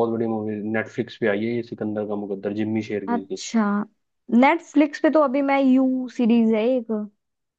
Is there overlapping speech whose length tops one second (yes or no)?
no